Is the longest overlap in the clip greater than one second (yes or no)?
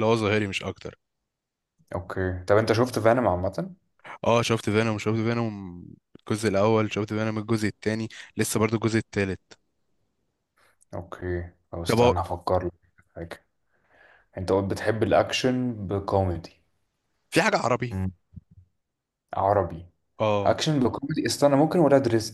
no